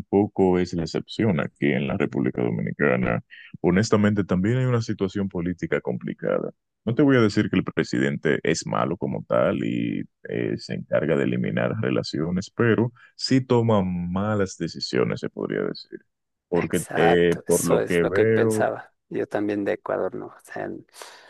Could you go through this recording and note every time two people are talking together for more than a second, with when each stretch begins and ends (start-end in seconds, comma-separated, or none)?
16.5-18.7